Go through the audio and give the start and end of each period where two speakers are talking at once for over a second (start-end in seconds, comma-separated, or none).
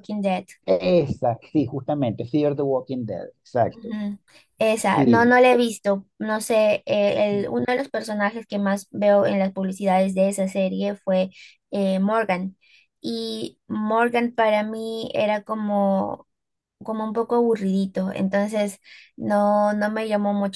none